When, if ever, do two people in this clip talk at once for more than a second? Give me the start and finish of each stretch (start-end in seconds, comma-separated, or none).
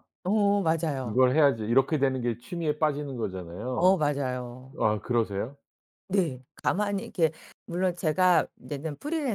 none